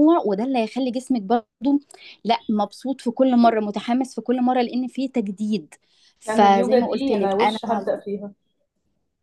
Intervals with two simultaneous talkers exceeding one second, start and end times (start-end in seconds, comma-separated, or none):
6.3-7.6